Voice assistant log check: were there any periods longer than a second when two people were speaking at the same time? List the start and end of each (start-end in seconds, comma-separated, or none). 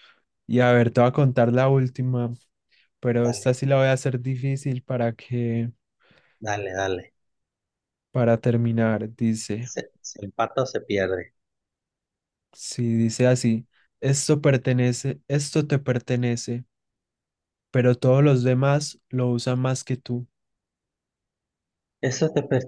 none